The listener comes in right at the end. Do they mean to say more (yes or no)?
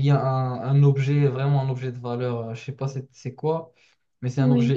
no